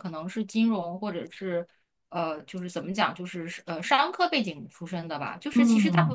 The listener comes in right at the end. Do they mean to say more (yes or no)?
no